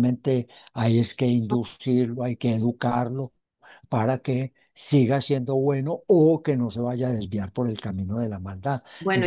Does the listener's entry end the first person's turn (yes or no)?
yes